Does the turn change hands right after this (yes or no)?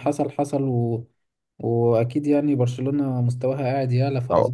yes